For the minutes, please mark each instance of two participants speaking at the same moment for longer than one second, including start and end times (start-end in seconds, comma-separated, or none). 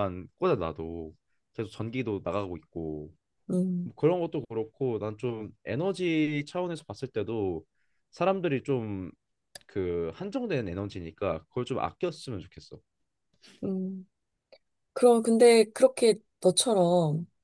none